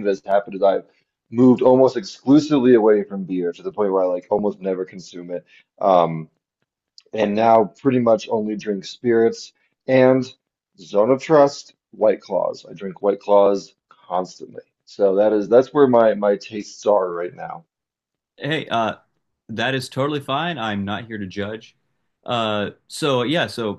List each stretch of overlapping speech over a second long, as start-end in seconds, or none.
none